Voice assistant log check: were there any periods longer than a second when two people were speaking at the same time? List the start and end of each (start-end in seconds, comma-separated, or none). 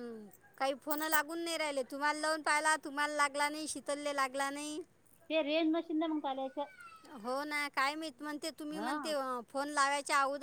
none